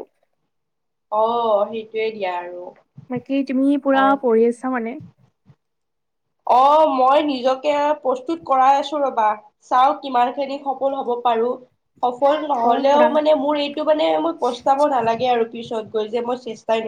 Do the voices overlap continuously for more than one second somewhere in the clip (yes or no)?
no